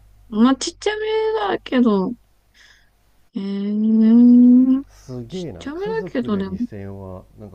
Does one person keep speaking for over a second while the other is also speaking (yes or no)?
yes